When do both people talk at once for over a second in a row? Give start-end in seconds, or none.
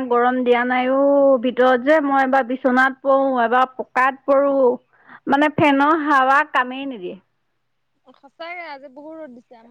none